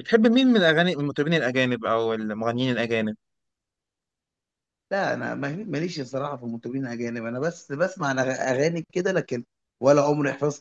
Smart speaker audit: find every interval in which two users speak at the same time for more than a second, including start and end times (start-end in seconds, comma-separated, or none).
none